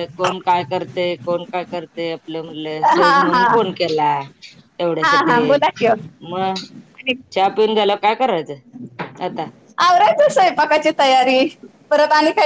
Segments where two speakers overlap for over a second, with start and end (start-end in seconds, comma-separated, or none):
none